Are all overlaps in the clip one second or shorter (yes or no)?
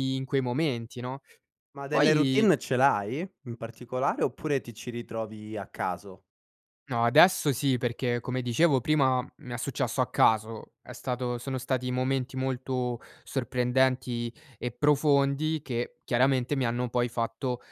yes